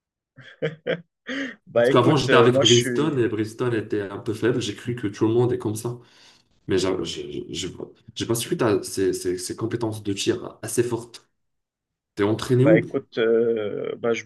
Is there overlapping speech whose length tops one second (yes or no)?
yes